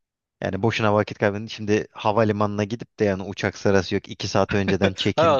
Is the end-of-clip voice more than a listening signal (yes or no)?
yes